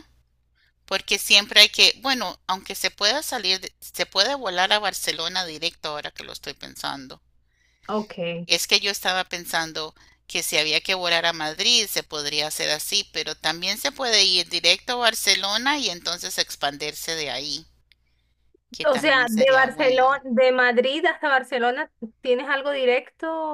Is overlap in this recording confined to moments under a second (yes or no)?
no